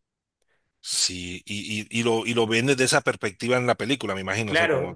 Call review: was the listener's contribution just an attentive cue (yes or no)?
no